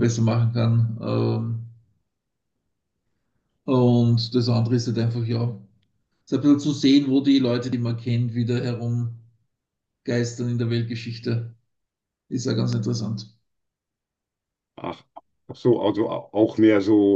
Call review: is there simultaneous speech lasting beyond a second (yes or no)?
no